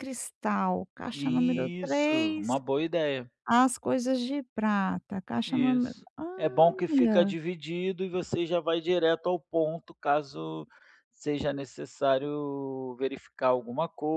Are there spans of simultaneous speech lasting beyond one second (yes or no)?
yes